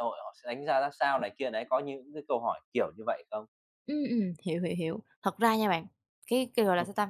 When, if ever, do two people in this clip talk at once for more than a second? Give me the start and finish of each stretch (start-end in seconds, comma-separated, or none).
none